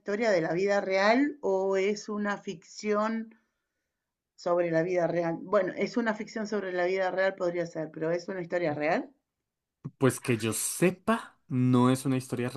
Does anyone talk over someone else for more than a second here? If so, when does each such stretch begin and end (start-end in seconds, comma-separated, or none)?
none